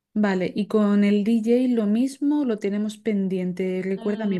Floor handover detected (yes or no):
yes